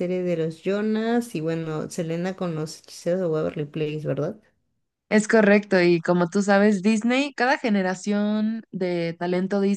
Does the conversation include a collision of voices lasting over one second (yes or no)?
no